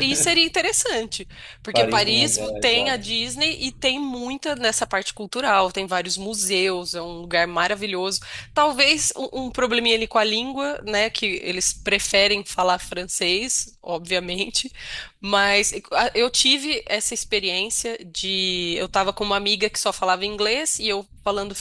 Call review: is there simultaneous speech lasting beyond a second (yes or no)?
yes